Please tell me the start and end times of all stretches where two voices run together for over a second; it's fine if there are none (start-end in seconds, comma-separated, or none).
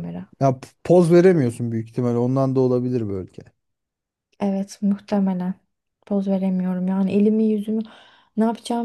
none